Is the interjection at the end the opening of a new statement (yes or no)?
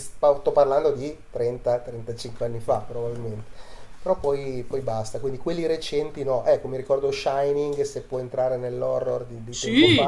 yes